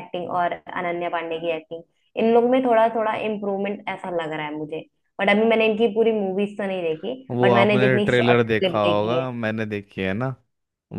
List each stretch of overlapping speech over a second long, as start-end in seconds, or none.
7.3-9.3